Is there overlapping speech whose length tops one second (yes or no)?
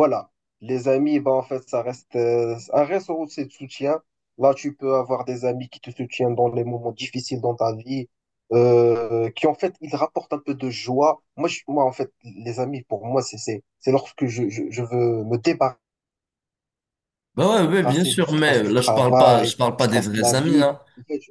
yes